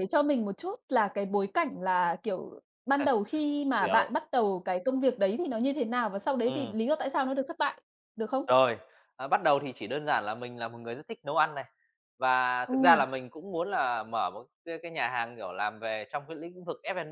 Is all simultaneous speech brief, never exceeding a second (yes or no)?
yes